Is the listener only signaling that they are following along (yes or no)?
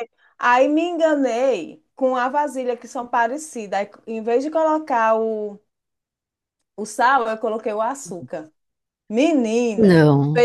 yes